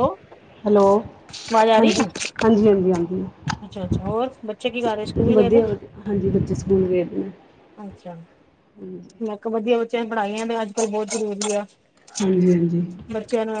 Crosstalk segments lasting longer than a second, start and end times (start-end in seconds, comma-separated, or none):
none